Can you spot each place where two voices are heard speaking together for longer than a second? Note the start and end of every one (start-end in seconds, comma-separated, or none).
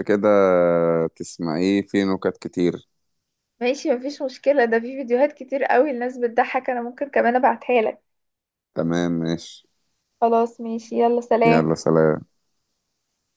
none